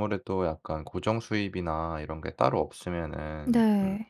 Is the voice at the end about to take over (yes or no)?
no